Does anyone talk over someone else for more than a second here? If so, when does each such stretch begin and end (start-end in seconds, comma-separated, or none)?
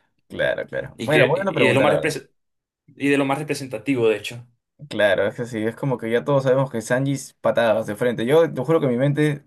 0.9-2.2